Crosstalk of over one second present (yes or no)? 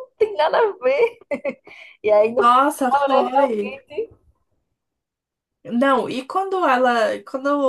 yes